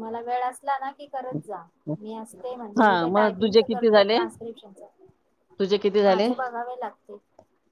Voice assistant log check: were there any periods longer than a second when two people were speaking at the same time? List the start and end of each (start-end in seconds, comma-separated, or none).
2.8-4.2